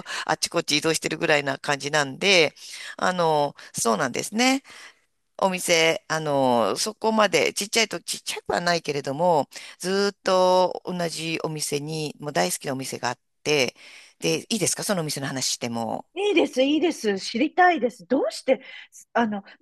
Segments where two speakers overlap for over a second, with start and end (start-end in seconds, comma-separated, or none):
none